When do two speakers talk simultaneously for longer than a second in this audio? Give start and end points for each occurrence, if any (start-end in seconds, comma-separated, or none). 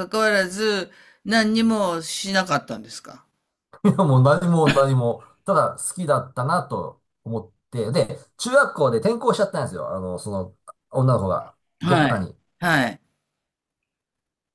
none